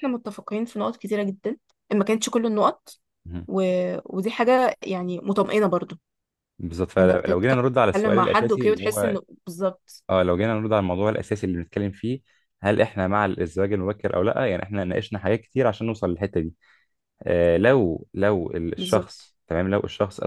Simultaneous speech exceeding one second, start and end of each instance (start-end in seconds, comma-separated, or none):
7.0-9.2